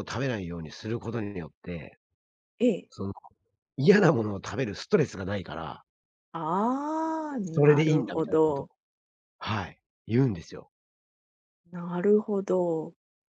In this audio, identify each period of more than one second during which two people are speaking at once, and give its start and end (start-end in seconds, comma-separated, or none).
7.4-8.7